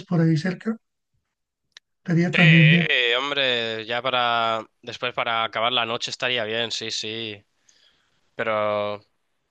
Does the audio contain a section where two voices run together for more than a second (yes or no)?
no